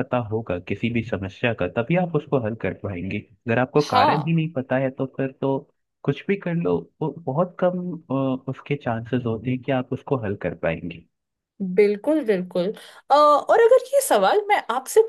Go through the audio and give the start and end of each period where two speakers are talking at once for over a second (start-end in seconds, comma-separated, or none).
none